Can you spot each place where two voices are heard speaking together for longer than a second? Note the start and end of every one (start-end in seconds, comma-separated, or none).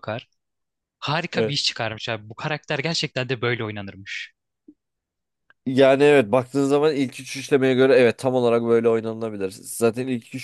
none